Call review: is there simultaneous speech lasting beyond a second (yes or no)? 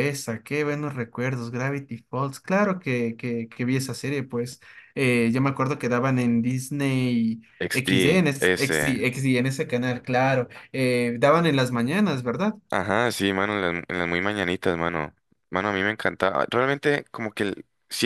yes